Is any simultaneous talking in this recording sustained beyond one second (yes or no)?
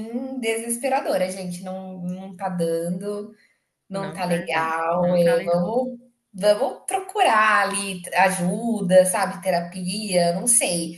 yes